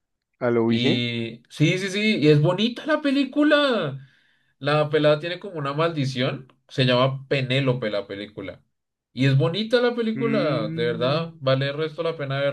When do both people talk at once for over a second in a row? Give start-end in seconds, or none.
10.2-11.4